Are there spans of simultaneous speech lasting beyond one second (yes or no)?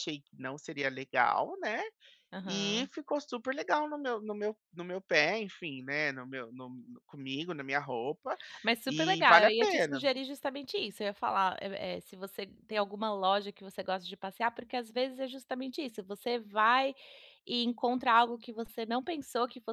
yes